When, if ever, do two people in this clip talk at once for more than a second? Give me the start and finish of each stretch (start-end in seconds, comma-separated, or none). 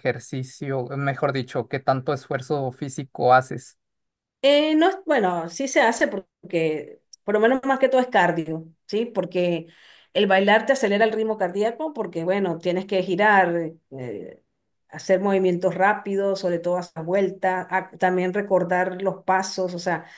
none